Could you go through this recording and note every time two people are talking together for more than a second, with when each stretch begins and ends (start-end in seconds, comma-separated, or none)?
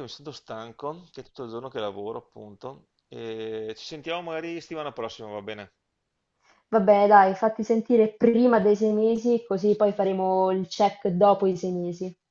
none